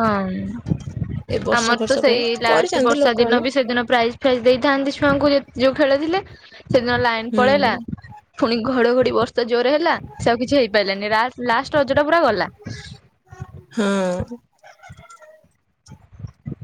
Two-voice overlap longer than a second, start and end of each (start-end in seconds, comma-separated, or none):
1.6-3.4